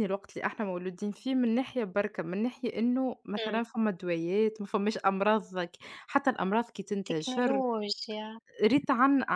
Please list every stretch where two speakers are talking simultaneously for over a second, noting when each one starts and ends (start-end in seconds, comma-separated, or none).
none